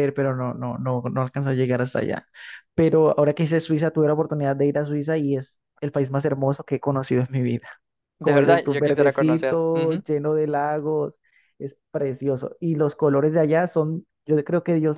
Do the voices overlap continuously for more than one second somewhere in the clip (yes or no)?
yes